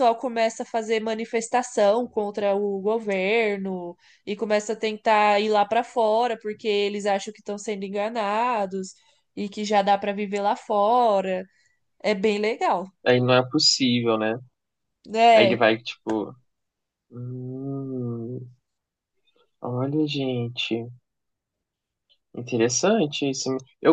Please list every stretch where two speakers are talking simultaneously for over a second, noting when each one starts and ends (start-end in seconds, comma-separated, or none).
none